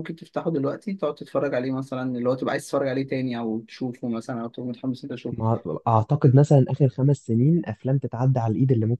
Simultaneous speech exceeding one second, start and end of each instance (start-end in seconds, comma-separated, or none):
none